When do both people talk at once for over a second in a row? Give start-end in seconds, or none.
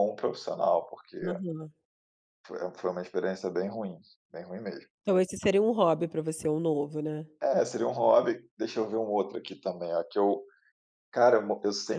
none